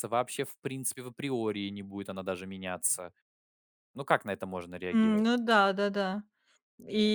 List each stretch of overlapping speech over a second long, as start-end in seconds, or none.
none